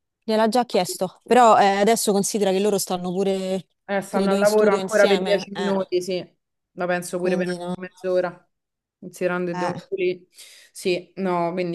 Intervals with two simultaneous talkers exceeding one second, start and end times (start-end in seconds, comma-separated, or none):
4.1-5.7